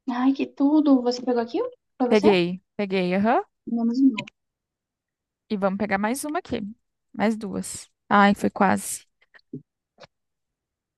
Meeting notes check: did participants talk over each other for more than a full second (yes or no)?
no